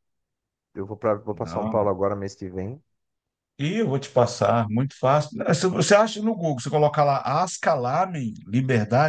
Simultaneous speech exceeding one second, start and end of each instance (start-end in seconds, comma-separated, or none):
none